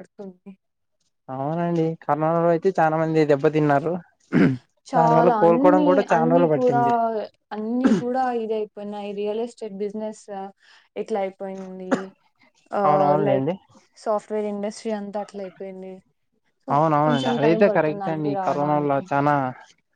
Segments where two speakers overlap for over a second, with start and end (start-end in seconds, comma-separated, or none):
5.0-6.8, 17.1-19.0